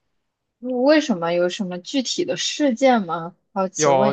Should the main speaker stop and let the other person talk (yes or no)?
yes